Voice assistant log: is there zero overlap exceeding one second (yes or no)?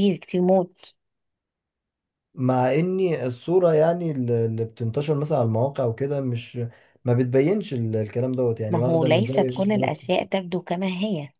no